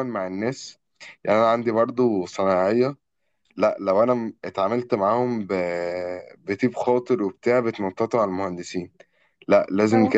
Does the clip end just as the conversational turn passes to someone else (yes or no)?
no